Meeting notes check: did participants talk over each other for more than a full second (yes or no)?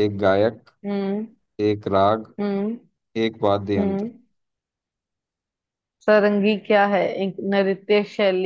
no